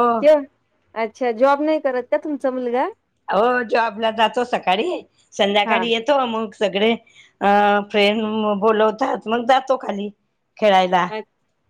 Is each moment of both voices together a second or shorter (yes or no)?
yes